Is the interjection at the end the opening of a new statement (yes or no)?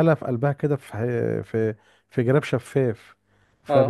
yes